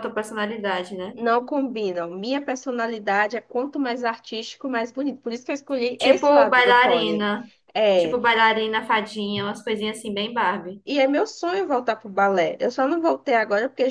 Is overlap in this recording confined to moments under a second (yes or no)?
no